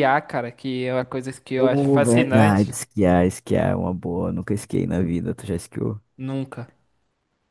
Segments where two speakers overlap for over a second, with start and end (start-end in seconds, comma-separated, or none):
1.6-2.8